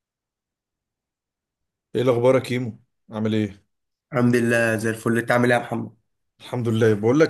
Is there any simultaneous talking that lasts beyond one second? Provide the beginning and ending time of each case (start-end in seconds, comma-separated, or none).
none